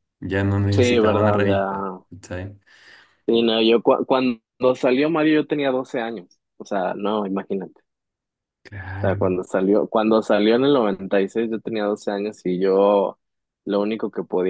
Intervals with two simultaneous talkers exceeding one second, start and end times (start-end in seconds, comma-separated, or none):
0.7-2.0